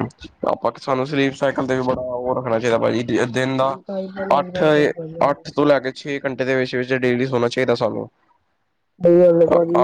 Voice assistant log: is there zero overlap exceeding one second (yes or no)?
no